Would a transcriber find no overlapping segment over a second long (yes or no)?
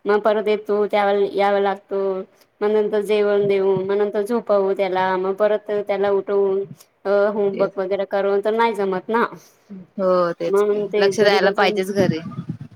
no